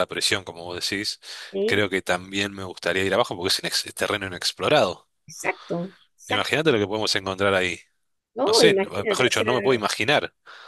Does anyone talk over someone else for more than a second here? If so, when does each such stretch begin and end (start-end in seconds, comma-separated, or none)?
8.5-9.8